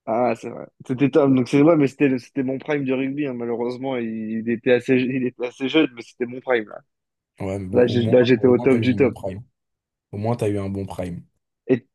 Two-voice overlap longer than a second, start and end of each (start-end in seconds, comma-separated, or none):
7.7-9.1